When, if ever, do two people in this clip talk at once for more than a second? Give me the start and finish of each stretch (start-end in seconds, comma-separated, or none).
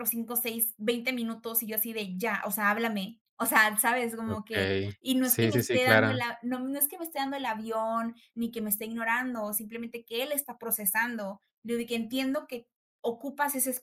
4.2-6.2